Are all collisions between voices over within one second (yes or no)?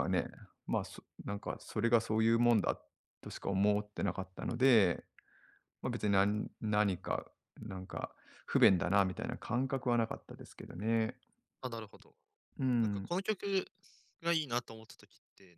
yes